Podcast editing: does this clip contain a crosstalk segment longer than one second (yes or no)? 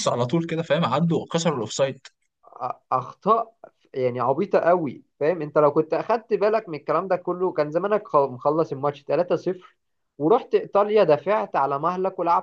no